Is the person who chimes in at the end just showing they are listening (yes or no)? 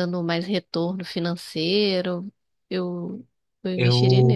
no